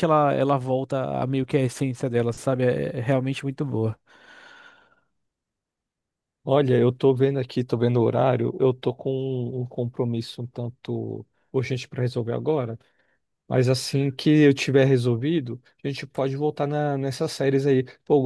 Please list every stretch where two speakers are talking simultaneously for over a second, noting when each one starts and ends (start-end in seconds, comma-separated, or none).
none